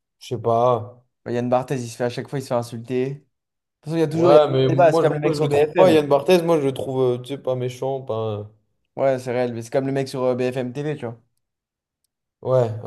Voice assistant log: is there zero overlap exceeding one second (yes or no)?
no